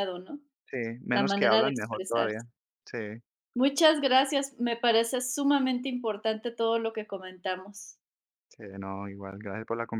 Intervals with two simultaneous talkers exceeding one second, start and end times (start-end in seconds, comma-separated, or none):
1.1-2.4